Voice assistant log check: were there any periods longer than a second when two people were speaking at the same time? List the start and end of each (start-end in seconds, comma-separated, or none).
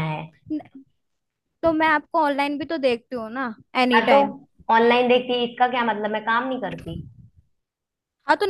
none